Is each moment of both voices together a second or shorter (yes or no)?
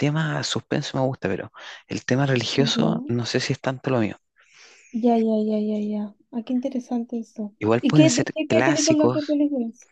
no